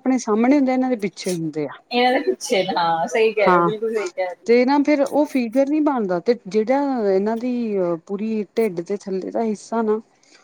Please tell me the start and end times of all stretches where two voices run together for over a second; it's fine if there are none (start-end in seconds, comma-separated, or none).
none